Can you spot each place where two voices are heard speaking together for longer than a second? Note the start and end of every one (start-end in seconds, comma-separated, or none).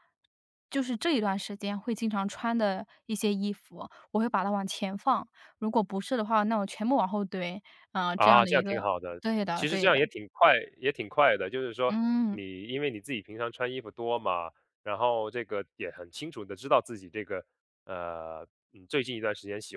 8.1-10.0